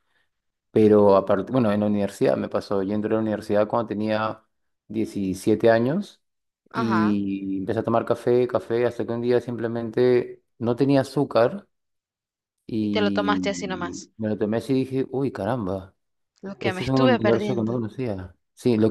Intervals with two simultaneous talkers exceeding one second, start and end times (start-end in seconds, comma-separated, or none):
12.8-14.1, 16.6-17.8